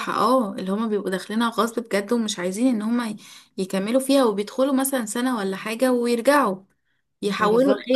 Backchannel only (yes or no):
no